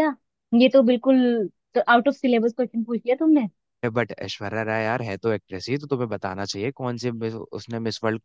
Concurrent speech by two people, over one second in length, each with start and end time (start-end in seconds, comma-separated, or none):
none